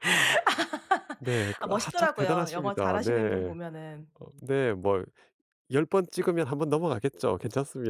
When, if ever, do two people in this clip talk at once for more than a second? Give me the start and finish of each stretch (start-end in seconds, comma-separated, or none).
1.6-3.5